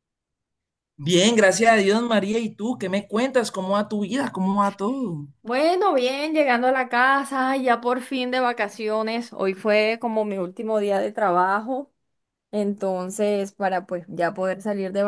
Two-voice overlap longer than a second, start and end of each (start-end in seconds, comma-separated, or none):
none